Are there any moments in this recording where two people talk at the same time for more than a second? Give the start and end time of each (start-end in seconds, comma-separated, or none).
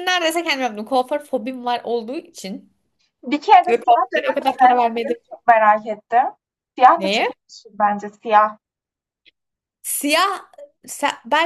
3.7-5.2